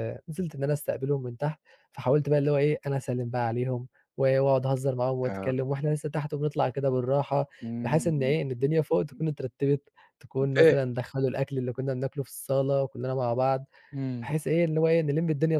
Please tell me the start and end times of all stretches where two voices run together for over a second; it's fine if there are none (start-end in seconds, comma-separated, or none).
none